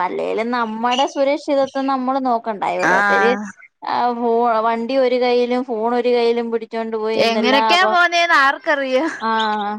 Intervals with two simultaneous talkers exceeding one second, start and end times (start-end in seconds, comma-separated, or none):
none